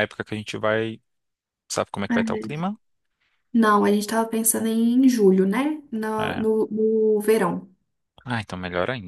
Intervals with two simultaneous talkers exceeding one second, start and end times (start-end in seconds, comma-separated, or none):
none